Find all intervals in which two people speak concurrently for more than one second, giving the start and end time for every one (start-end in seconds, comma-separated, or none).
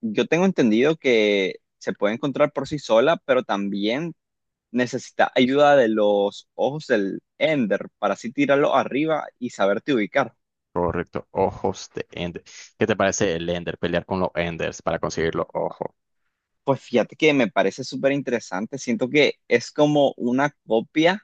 none